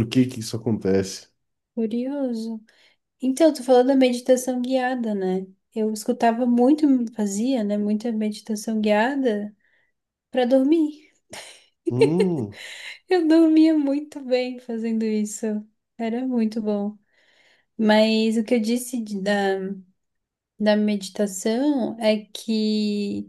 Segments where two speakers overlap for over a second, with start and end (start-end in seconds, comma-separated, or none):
none